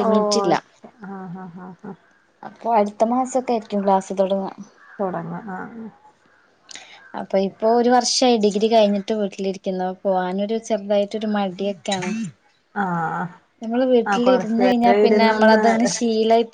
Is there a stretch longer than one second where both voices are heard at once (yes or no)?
yes